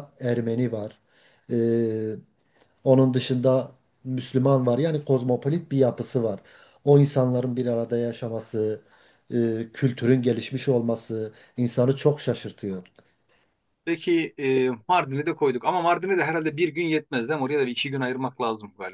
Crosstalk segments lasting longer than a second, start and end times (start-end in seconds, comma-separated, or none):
none